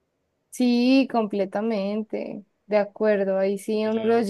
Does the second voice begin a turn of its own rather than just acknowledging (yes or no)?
no